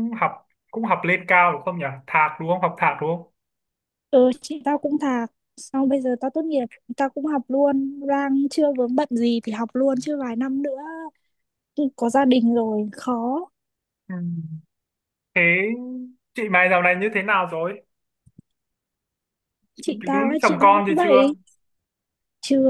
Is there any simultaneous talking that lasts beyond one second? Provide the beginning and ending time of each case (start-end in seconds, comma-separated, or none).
19.9-21.3